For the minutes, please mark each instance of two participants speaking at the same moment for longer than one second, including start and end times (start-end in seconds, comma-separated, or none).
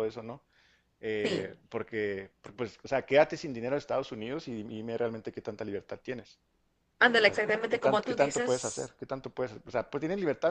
7.2-8.9